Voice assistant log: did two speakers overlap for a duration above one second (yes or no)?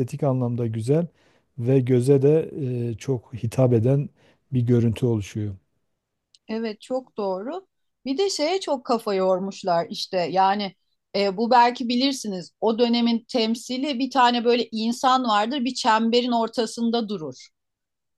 no